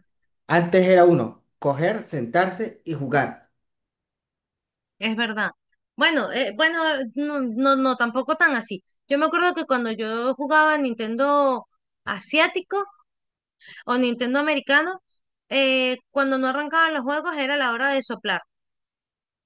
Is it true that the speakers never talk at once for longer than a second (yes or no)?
yes